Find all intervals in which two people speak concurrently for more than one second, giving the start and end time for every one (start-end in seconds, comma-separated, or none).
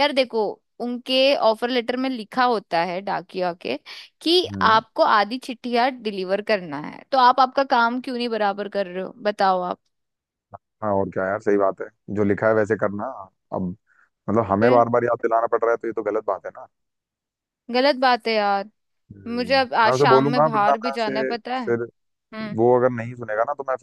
19.3-21.1